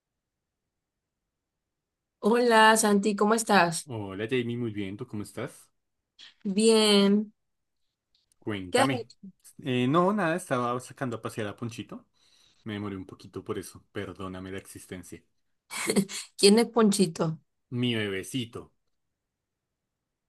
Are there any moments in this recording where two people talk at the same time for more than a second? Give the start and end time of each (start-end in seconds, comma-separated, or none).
none